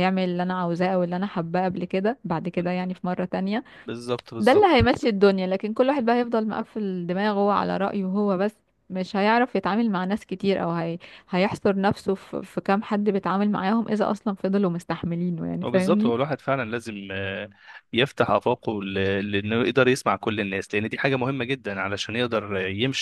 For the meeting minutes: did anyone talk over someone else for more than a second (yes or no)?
no